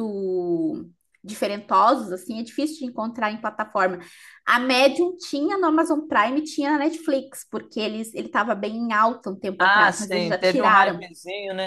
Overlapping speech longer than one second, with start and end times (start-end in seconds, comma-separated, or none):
9.6-11.1